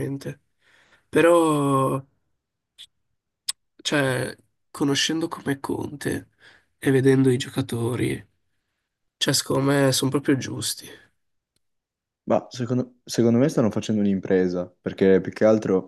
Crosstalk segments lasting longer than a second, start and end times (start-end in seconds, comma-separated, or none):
none